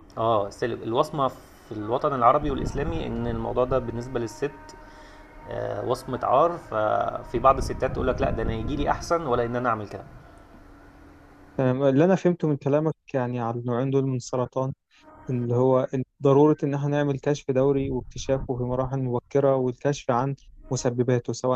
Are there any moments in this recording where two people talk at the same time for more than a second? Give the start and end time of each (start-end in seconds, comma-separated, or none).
none